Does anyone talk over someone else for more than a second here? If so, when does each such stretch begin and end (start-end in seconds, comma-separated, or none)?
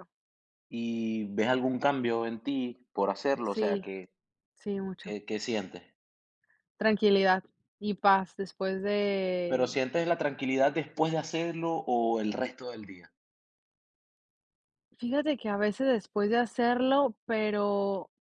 none